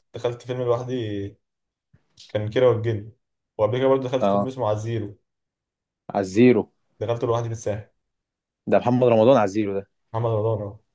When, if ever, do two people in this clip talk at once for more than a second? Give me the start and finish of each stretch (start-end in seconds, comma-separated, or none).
none